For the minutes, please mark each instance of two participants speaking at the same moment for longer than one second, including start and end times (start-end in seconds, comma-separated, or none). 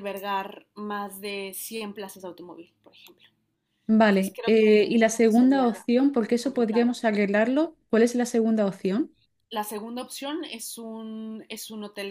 4.1-5.7